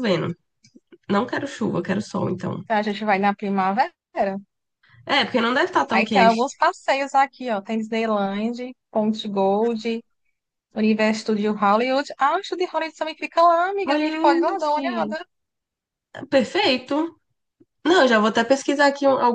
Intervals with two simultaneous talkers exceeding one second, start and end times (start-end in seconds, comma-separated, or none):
13.8-15.2